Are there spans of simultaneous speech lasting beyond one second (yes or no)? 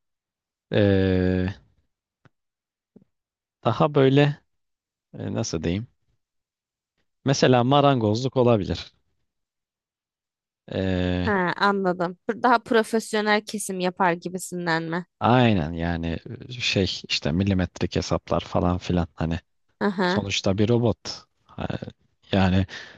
no